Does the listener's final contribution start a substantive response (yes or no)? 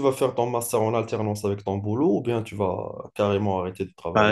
yes